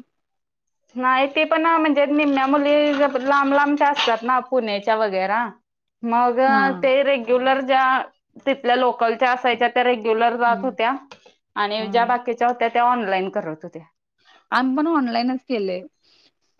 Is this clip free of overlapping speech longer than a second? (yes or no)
yes